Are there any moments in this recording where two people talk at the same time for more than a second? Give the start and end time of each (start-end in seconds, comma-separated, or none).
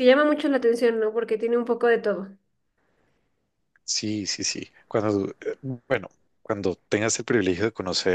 none